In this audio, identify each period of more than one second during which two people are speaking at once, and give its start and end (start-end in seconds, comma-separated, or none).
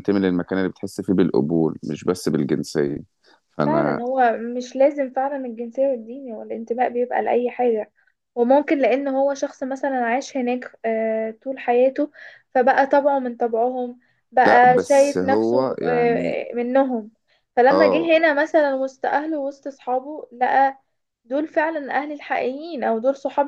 14.4-16.4